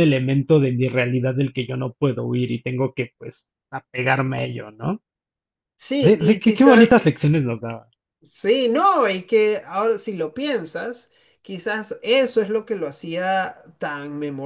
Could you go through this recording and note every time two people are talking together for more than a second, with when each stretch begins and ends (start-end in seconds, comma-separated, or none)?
6.0-7.2